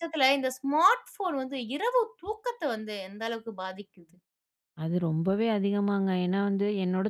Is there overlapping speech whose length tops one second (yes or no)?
no